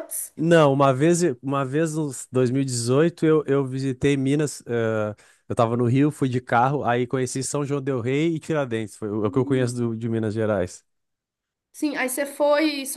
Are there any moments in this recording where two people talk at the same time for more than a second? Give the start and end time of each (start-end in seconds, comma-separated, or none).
none